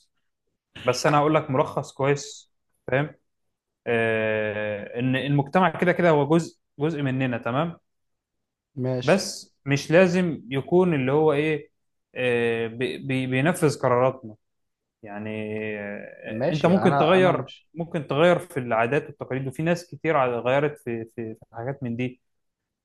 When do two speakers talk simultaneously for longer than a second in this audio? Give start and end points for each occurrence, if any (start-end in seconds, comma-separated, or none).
16.3-17.7